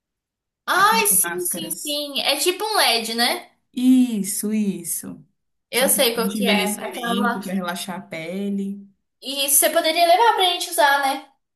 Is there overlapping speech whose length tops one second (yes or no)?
yes